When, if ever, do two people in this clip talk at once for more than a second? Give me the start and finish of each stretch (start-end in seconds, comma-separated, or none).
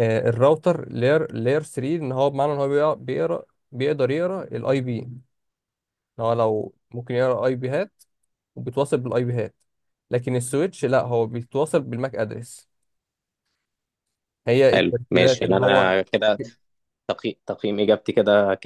14.7-16.0